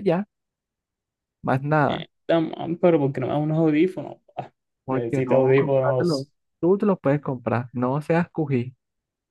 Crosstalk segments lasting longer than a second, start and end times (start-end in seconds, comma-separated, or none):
4.9-6.3